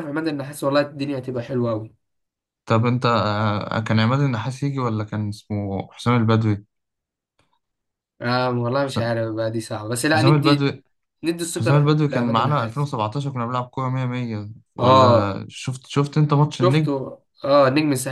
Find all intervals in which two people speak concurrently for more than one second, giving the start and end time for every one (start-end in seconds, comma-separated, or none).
11.5-12.9